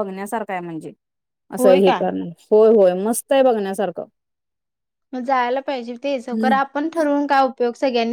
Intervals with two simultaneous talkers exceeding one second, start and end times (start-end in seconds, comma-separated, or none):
none